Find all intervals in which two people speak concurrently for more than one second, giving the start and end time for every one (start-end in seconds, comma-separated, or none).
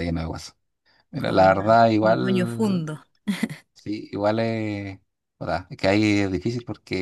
1.2-2.9